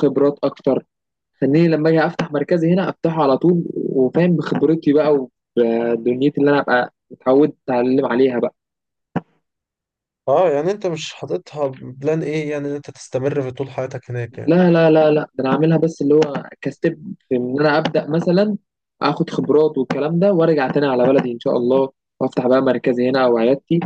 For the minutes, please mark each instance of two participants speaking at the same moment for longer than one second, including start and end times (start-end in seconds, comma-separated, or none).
none